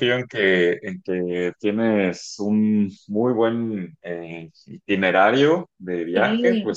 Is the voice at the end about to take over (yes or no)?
no